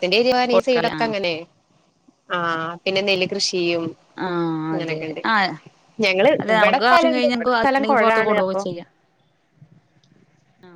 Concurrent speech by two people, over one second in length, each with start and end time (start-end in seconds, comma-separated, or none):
6.4-8.6